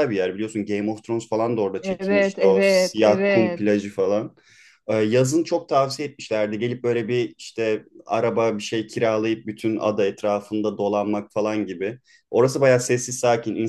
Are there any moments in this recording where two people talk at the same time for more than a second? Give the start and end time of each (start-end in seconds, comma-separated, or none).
1.8-3.8